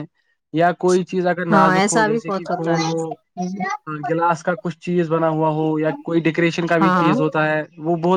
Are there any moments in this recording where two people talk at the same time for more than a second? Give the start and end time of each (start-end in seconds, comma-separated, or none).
1.5-3.5